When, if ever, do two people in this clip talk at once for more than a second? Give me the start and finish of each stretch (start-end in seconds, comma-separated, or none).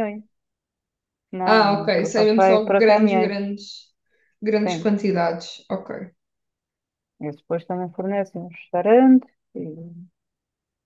1.4-3.4